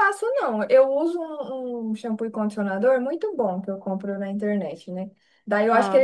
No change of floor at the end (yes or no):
yes